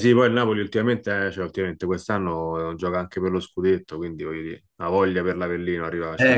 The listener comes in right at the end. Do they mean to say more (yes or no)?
yes